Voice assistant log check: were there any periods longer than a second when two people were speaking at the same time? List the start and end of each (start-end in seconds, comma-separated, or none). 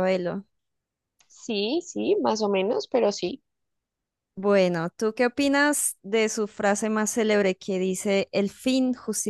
none